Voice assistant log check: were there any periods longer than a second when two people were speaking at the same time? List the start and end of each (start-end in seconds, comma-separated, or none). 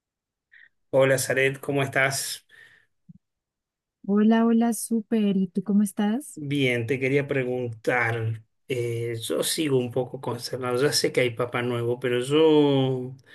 none